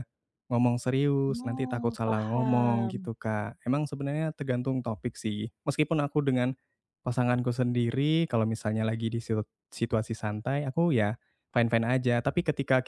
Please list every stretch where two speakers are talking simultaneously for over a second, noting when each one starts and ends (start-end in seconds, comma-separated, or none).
1.3-3.1